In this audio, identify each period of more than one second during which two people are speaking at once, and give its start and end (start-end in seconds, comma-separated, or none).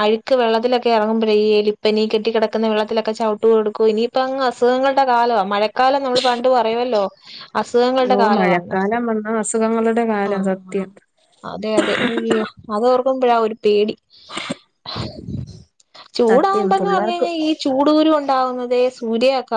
none